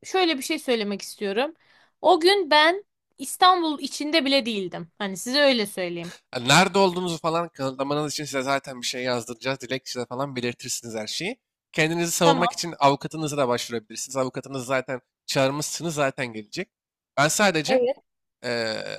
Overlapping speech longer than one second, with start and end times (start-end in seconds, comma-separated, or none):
none